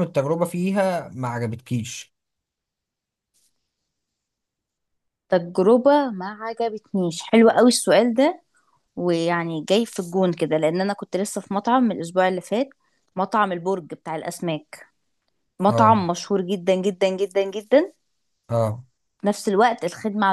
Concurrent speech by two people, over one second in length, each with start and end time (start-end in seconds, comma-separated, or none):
none